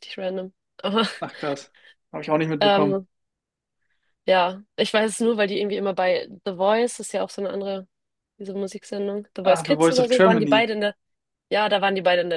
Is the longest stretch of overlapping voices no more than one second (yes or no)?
no